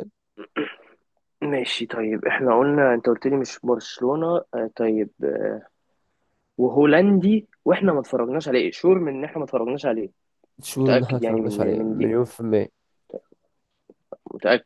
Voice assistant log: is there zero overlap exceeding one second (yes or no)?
no